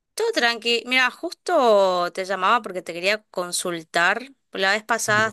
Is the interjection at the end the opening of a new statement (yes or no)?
no